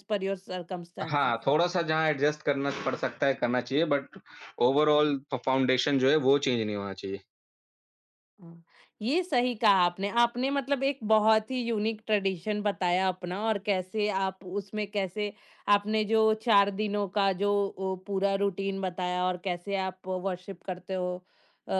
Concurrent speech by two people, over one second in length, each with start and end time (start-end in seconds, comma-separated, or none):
none